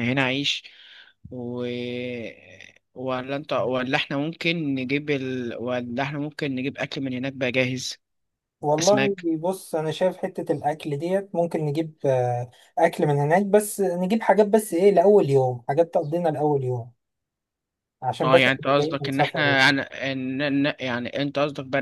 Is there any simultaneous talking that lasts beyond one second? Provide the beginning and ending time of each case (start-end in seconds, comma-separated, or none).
18.2-19.6